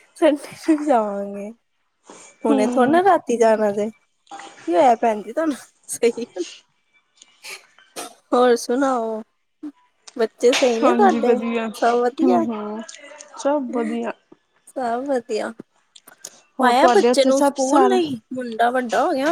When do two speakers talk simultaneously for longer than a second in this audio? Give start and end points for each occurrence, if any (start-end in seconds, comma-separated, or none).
16.6-18.0